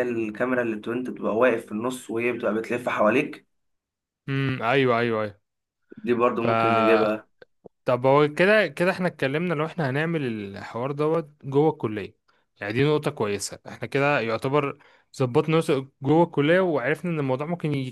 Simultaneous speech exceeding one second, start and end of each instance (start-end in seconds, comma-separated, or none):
none